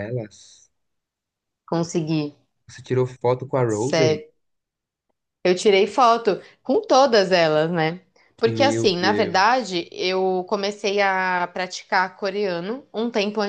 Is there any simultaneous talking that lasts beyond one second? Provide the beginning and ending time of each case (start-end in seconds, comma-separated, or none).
8.5-9.7